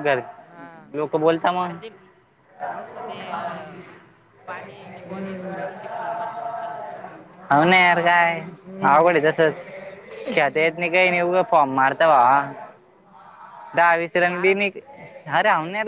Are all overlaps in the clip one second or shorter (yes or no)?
yes